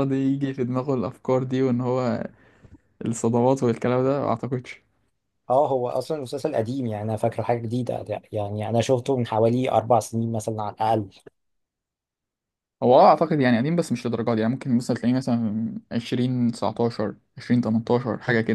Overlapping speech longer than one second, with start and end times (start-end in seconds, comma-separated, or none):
none